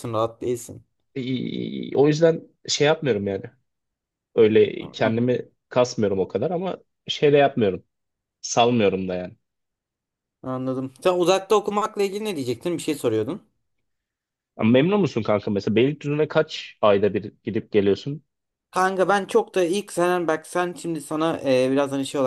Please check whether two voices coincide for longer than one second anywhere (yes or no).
no